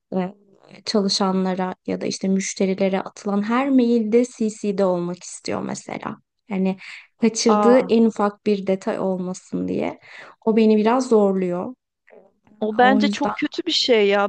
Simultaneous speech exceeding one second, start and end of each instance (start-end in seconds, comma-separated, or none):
none